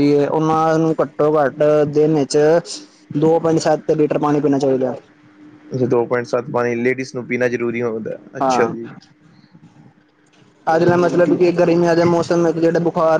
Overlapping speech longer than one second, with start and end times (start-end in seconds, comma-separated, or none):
none